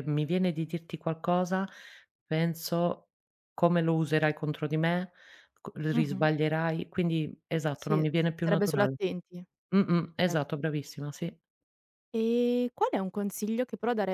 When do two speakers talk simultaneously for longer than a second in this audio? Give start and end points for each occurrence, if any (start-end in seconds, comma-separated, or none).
7.8-8.9